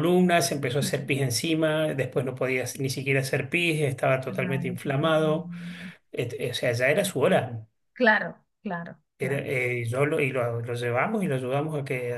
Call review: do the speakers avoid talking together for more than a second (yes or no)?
no